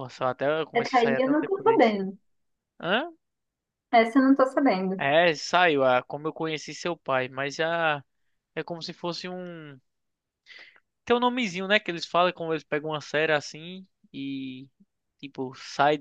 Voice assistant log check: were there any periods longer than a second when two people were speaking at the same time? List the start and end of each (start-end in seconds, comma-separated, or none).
0.7-1.9